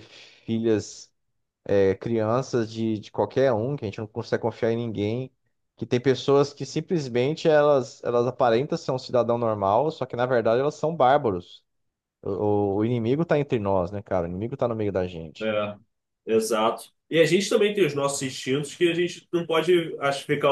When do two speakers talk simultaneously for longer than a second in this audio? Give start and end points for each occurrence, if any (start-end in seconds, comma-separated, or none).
none